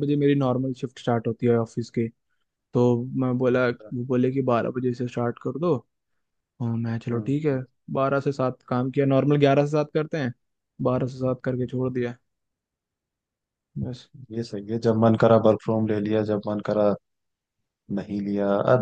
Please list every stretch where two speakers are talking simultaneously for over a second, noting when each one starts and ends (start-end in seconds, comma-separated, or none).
none